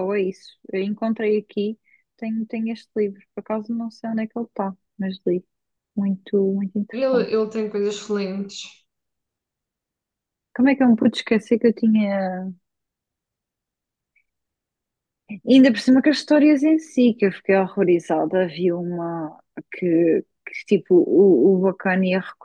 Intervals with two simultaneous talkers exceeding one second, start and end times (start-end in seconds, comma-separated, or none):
none